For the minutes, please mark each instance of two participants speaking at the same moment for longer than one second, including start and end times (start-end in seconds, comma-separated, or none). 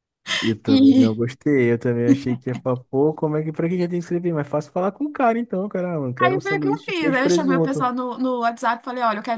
6.2-7.9